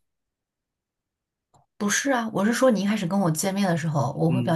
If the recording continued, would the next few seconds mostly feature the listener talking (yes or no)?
no